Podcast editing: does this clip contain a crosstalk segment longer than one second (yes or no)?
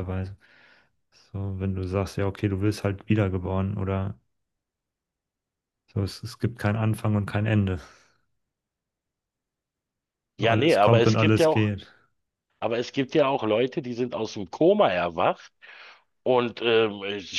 yes